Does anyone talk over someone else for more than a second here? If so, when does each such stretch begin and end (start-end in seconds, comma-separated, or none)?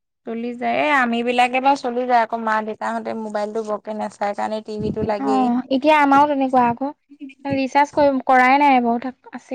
none